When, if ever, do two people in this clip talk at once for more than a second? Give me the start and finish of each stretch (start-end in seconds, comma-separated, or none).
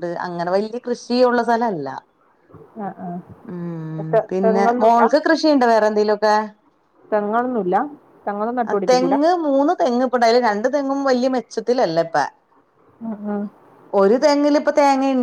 none